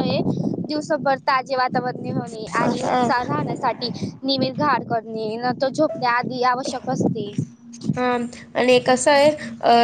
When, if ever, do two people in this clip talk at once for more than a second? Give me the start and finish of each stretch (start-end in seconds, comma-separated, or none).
none